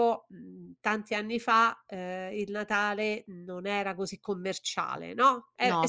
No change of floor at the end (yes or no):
yes